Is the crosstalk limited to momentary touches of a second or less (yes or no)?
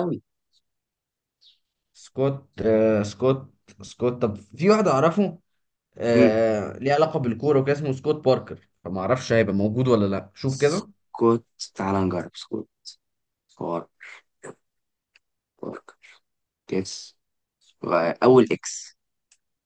yes